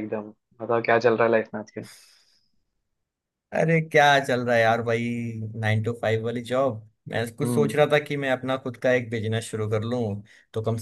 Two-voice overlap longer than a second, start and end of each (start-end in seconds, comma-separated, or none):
none